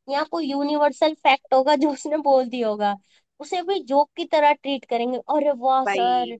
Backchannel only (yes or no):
yes